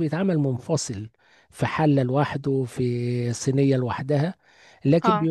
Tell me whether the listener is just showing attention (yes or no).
yes